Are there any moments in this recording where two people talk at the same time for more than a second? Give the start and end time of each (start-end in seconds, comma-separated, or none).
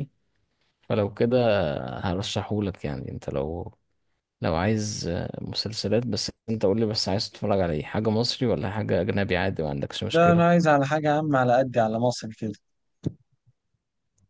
none